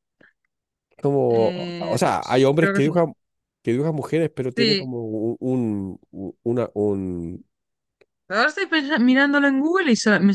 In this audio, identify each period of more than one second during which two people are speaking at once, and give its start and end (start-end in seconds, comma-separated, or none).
1.3-3.0